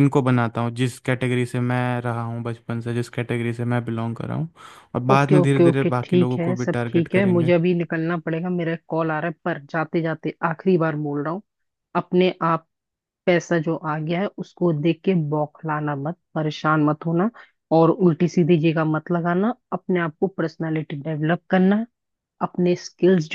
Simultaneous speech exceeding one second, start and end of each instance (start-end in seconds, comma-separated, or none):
5.1-7.5